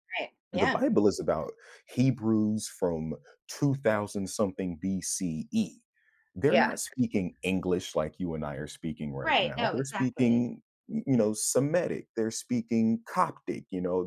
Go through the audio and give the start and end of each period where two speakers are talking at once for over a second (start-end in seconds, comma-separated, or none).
9.2-10.5